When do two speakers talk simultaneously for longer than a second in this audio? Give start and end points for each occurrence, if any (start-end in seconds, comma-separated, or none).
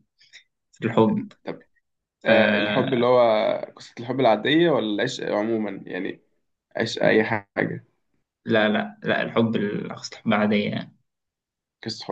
none